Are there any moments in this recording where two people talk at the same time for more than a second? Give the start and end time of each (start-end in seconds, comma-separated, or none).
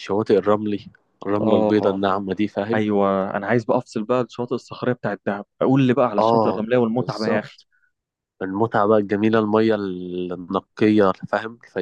6.2-7.6